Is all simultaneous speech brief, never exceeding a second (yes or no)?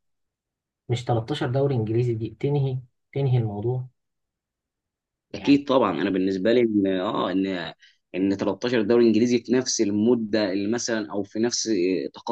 yes